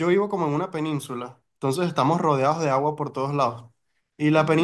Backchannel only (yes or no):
yes